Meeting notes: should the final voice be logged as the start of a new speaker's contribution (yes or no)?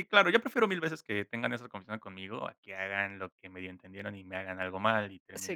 yes